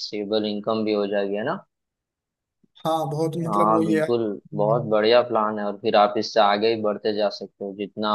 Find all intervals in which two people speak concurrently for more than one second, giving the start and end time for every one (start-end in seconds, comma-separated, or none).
3.5-5.0